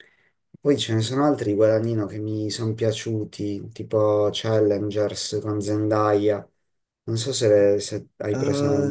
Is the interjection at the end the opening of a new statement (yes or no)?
yes